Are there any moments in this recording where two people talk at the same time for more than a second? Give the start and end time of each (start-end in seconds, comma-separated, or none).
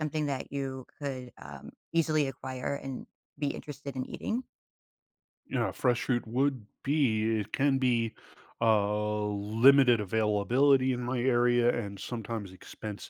none